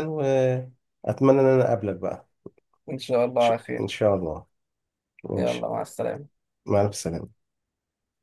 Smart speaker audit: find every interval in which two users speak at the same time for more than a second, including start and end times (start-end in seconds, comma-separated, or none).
none